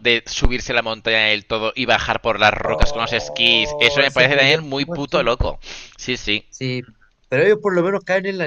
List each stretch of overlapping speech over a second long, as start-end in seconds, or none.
2.6-5.3